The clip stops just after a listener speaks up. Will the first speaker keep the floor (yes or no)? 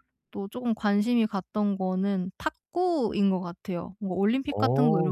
yes